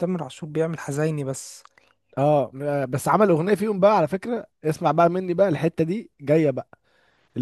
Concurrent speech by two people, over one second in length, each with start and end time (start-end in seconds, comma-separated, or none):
none